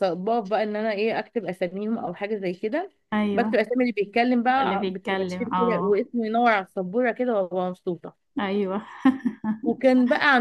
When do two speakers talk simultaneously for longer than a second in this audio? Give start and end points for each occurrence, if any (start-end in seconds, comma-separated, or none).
4.6-6.0